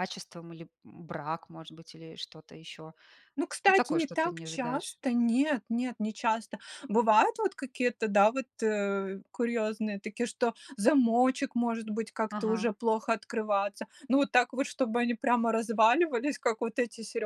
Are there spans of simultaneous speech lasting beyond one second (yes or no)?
yes